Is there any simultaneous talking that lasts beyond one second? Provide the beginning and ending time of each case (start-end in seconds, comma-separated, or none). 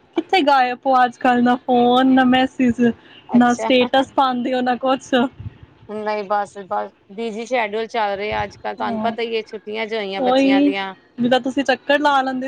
none